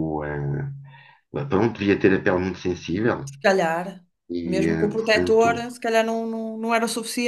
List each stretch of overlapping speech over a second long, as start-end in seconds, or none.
4.4-5.7